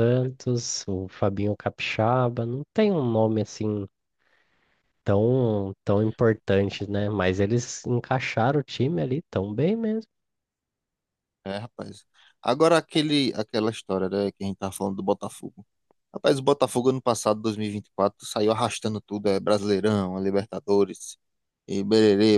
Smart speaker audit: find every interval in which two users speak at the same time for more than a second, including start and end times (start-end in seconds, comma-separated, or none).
none